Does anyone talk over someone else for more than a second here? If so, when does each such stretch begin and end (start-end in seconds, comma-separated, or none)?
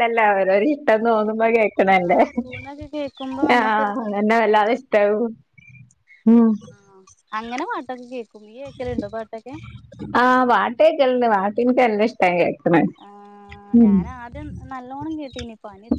2.1-3.4